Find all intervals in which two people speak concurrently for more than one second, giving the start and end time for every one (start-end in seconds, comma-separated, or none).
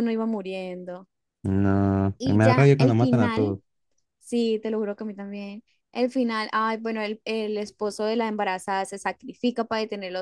2.2-3.6